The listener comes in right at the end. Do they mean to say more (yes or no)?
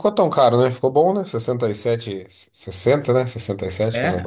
yes